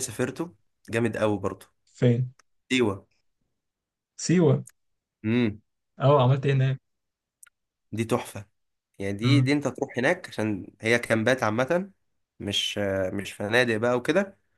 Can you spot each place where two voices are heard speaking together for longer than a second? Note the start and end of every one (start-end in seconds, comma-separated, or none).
none